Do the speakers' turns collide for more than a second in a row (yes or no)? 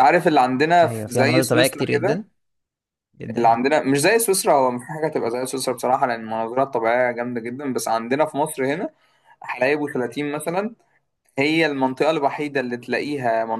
yes